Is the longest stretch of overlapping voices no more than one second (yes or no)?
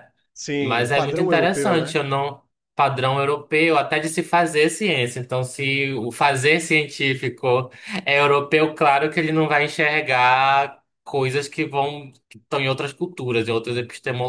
no